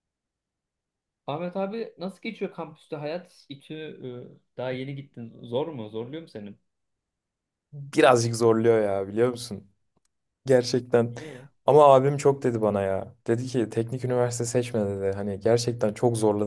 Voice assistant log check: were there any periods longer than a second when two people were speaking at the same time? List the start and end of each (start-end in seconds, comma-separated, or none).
none